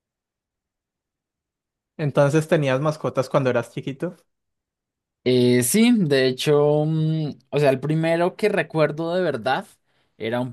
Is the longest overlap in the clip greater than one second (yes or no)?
no